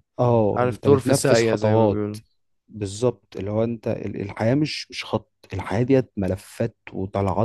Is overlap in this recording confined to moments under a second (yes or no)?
no